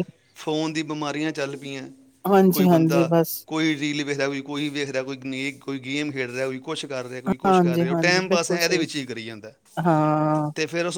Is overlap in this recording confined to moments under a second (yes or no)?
no